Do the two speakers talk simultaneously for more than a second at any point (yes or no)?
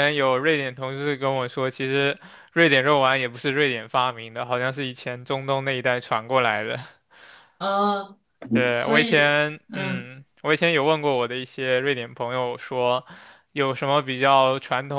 yes